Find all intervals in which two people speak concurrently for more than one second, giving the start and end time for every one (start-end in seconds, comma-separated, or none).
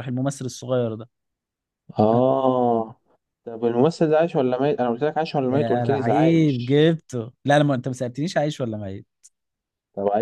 5.5-6.8